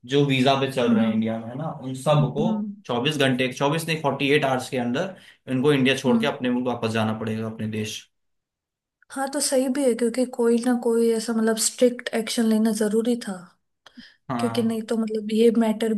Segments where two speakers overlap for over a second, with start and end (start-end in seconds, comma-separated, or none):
none